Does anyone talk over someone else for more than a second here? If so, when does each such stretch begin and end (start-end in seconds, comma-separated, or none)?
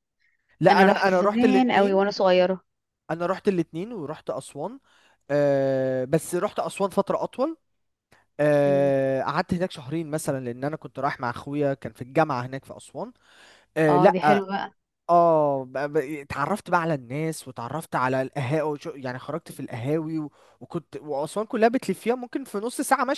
0.7-2.0